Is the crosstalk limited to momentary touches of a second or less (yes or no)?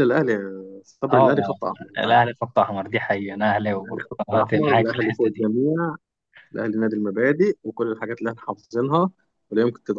no